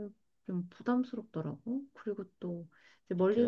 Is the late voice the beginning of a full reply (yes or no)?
no